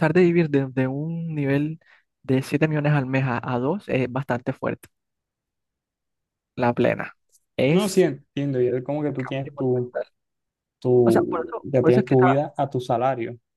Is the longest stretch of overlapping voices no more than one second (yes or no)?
no